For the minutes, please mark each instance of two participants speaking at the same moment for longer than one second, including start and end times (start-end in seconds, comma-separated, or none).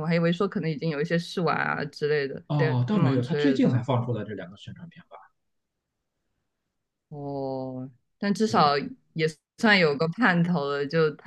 2.5-3.8